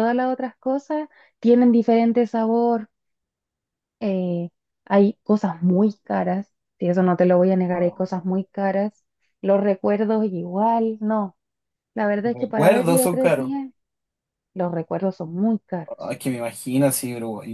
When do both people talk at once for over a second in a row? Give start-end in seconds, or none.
12.2-13.5